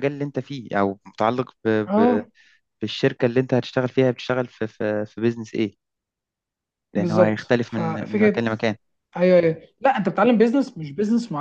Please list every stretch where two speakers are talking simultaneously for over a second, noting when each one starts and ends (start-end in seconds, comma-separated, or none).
7.0-8.4